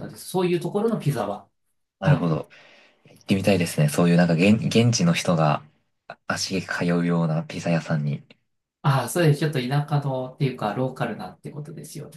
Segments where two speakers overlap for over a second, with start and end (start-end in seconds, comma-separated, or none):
none